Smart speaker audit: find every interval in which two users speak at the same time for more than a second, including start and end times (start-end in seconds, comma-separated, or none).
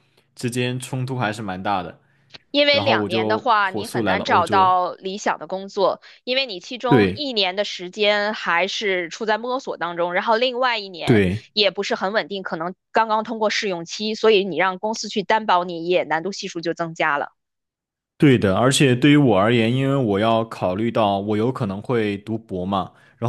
2.7-4.8